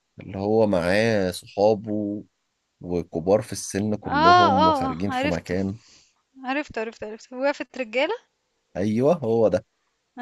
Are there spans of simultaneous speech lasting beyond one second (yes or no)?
yes